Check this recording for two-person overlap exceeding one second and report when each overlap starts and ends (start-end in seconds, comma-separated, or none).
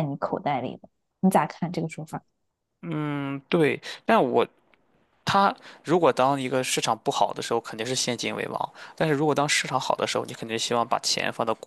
none